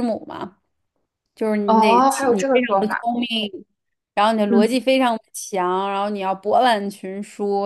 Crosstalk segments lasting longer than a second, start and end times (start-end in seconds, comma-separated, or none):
1.7-3.0